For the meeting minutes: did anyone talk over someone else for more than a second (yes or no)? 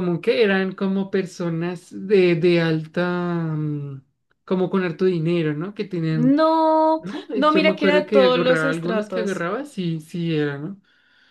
yes